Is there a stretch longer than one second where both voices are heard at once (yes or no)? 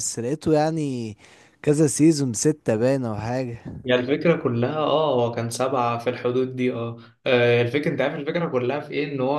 no